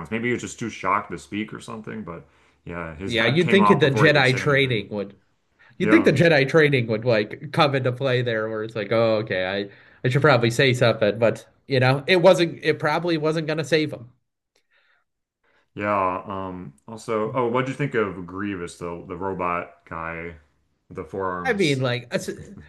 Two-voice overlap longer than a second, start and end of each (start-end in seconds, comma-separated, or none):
3.0-4.9